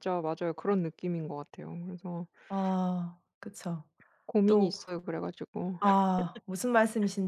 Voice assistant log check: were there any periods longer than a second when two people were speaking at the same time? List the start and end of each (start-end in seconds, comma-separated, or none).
none